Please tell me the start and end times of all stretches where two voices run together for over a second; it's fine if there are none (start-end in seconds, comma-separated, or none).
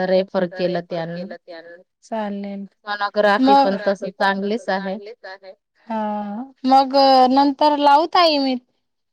3.4-4.9